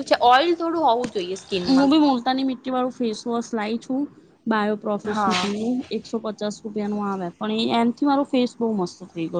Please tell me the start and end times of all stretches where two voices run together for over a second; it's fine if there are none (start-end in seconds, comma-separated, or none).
none